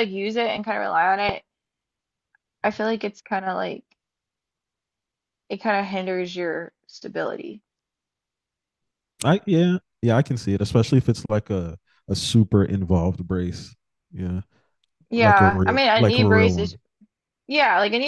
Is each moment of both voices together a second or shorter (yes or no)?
no